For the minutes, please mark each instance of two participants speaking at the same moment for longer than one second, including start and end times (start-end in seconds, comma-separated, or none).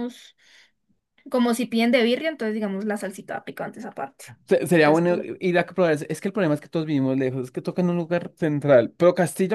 none